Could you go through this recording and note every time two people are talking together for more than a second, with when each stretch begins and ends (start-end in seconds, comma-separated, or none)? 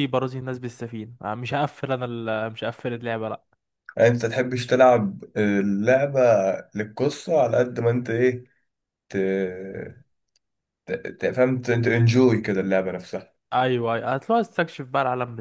none